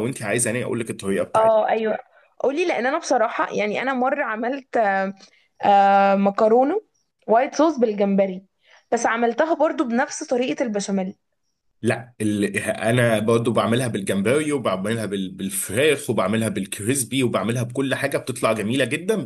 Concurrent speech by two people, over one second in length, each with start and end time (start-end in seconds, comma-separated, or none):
none